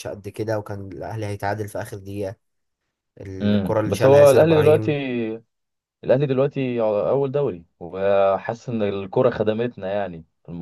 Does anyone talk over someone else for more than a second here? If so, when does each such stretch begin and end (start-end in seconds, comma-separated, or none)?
3.4-4.9